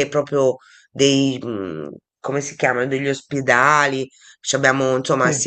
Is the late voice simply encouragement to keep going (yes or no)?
yes